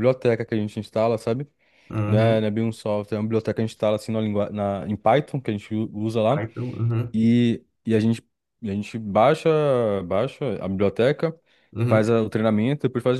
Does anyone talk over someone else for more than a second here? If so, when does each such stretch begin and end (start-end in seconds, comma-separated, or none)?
none